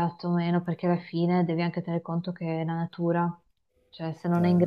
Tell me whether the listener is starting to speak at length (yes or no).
no